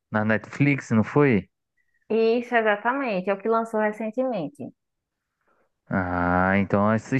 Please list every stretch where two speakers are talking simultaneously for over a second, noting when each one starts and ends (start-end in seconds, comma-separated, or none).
none